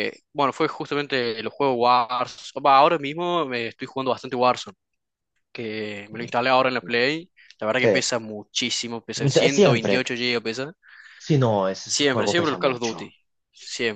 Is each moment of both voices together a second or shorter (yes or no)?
no